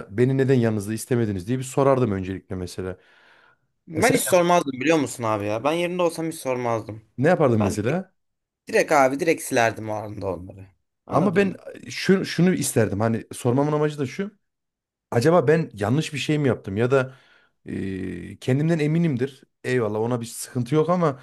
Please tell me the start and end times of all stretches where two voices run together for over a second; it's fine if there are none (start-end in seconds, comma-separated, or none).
none